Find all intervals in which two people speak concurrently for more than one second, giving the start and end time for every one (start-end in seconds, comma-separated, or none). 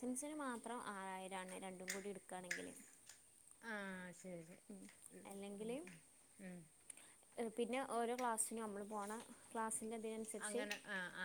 none